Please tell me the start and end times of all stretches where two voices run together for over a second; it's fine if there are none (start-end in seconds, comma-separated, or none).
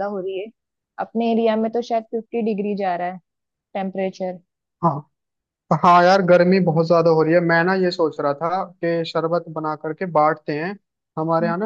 none